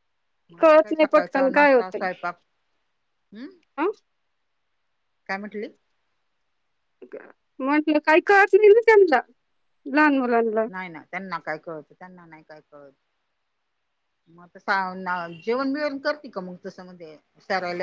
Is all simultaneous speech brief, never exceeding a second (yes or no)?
no